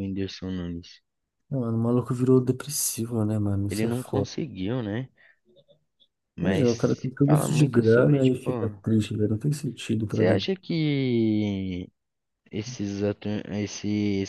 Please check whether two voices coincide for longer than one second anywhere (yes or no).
yes